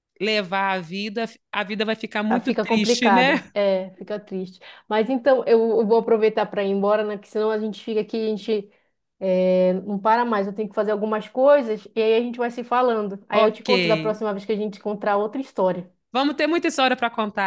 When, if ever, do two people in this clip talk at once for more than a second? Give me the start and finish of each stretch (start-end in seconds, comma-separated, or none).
2.3-3.5